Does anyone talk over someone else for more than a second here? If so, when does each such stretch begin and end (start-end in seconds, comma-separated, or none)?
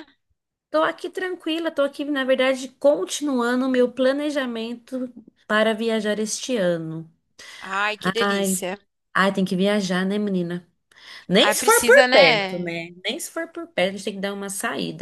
11.4-12.7